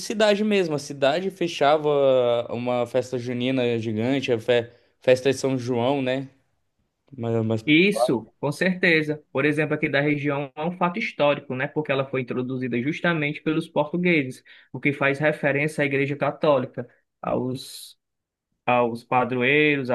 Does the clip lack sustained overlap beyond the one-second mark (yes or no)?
yes